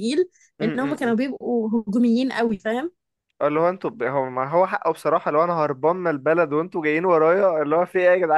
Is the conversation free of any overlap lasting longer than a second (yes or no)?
yes